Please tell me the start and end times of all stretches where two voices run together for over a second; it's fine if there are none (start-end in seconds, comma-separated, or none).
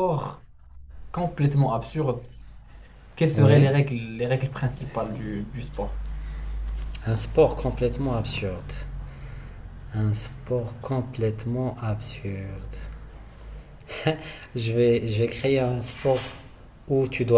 none